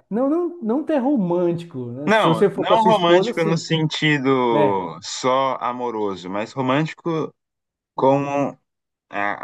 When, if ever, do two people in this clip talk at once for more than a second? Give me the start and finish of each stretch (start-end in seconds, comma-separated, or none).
2.1-3.7